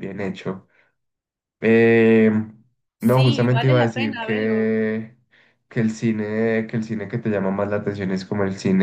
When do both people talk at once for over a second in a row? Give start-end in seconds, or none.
3.0-4.7